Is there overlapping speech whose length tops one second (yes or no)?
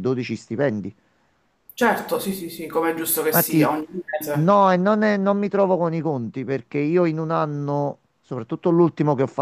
no